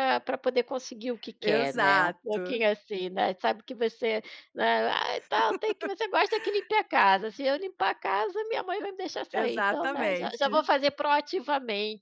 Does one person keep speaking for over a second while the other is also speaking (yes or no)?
yes